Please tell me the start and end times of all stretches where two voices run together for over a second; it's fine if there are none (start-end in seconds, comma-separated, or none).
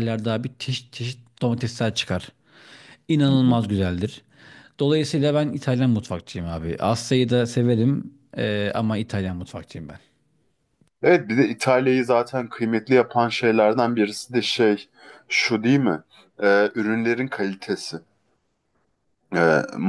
none